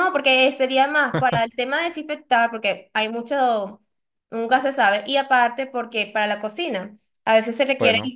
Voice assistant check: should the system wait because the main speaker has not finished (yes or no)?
yes